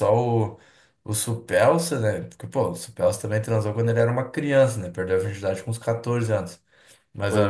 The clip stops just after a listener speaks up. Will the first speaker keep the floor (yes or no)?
yes